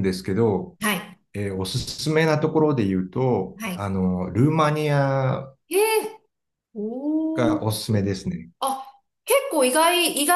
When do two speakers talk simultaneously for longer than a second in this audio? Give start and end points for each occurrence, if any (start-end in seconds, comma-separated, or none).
none